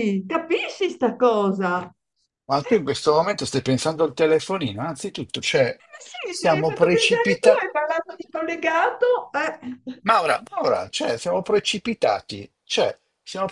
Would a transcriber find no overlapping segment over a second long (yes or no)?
no